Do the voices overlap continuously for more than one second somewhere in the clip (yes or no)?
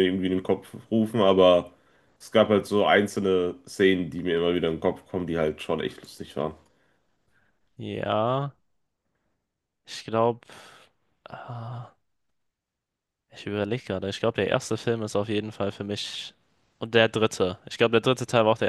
no